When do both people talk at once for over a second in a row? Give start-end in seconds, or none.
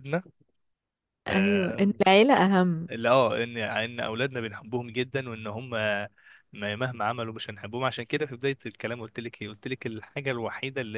none